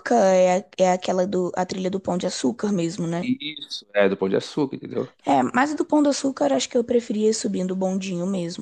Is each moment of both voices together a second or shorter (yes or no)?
yes